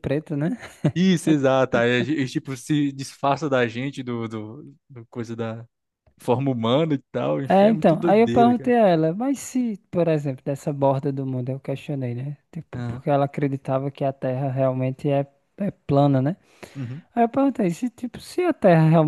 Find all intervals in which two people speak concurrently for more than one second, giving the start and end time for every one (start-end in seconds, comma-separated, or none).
7.5-8.7